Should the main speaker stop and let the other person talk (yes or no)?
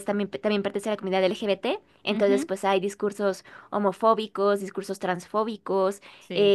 no